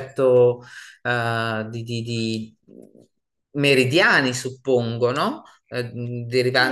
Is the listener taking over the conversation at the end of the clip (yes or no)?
yes